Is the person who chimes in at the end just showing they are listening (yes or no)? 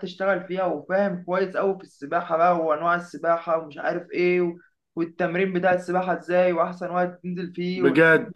no